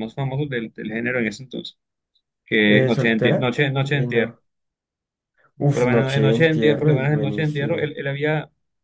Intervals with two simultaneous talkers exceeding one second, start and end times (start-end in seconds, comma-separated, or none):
2.6-4.3, 5.7-7.9